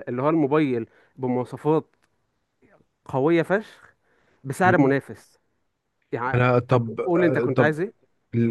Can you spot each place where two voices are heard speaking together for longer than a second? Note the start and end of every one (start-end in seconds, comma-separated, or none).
6.3-7.7